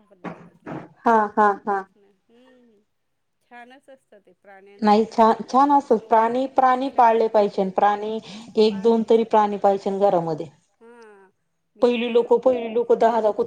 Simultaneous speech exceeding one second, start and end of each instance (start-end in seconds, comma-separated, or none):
5.9-7.7